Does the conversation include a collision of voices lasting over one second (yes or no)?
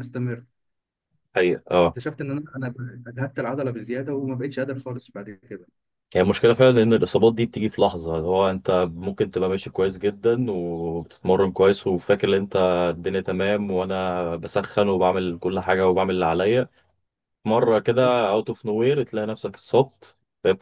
no